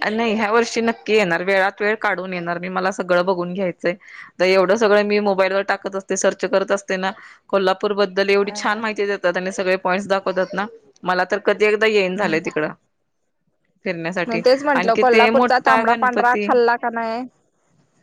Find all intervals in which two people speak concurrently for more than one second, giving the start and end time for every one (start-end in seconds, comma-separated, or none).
14.8-16.4